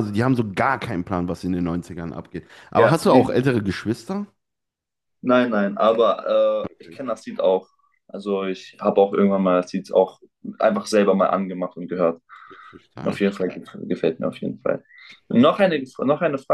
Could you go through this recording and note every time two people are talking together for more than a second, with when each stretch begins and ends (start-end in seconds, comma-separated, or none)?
none